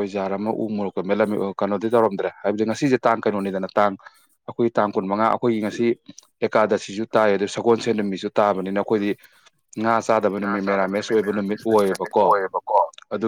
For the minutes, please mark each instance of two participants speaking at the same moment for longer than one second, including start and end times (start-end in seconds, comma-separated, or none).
10.4-12.2